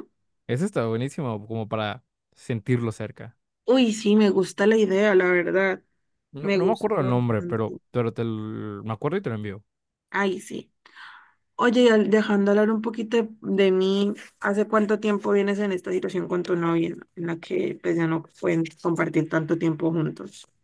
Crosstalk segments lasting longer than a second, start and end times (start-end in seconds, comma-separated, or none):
6.4-7.8